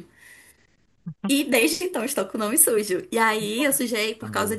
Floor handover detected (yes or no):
no